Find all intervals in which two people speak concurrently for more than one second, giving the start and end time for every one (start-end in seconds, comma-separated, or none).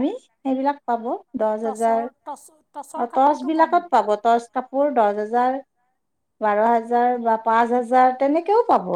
1.6-3.7